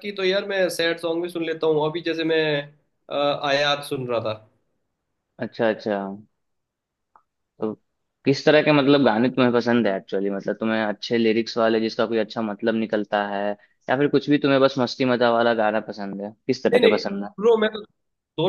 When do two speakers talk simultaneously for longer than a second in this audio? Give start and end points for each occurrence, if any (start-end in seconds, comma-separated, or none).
none